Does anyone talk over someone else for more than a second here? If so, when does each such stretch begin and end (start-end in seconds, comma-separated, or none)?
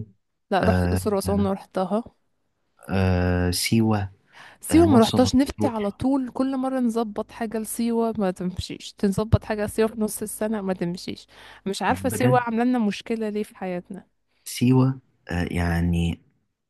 4.7-6.0